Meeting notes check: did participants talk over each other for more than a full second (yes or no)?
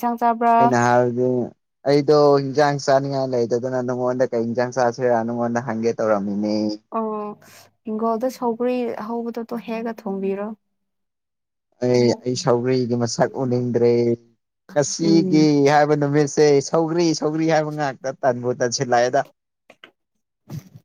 no